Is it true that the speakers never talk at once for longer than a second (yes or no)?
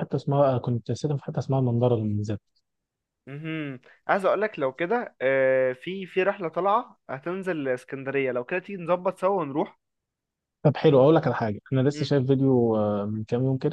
yes